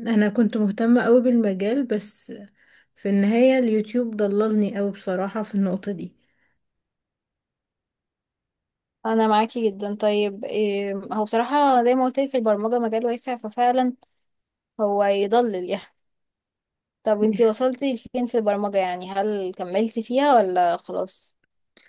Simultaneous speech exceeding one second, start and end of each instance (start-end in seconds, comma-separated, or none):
none